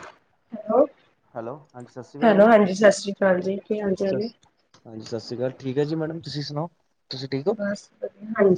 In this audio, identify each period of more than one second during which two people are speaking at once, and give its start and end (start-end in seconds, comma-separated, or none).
none